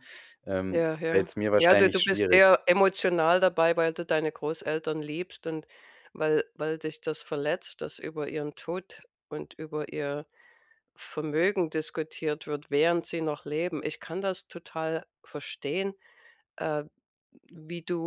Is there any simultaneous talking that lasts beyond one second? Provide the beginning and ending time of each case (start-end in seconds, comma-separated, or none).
0.7-2.4